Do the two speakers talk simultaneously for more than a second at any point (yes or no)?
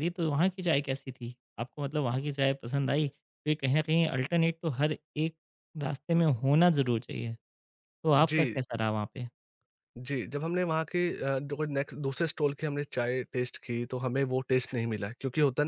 no